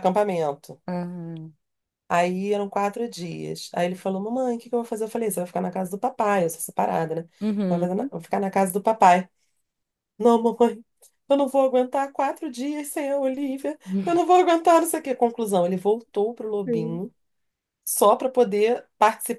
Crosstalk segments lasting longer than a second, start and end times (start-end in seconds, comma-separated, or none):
none